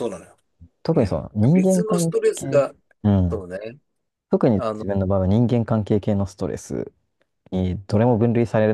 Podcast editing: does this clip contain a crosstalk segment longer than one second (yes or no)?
yes